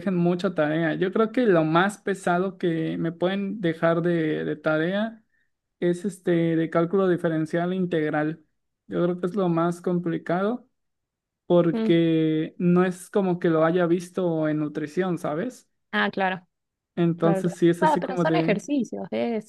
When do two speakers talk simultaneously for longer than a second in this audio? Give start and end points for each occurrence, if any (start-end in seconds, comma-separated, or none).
17.2-18.6